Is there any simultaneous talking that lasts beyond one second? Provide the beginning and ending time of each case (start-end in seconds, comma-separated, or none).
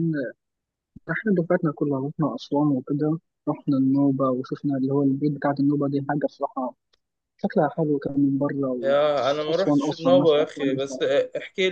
9.5-11.0